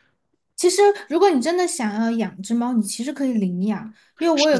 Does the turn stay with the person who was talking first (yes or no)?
yes